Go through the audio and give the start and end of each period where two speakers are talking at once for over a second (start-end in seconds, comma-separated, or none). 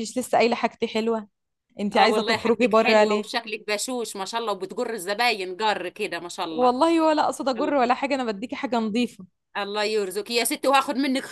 1.9-3.3